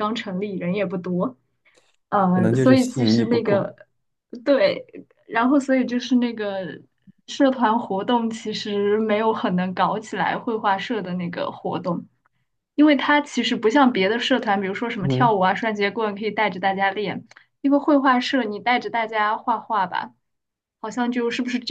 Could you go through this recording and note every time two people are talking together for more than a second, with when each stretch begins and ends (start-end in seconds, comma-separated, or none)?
2.4-3.7